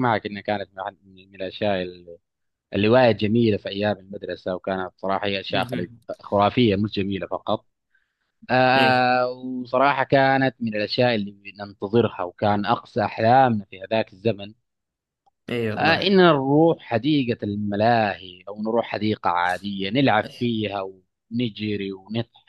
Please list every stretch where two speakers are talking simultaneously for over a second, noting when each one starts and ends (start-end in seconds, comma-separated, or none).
none